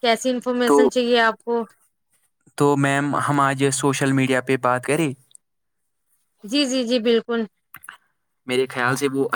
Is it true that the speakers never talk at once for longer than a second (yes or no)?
yes